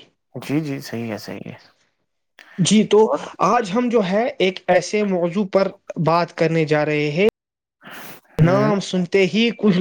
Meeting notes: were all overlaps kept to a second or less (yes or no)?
yes